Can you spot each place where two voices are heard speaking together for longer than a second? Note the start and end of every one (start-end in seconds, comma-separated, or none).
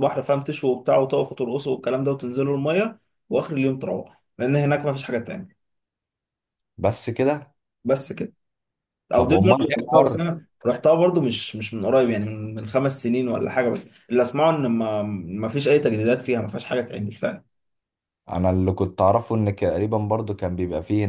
9.2-10.4